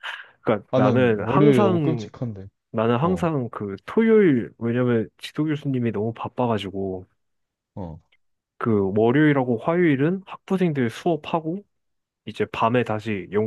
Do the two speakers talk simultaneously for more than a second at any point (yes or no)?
yes